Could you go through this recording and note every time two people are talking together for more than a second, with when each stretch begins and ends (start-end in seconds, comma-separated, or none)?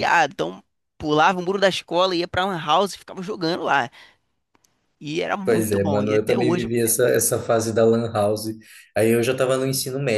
5.4-6.7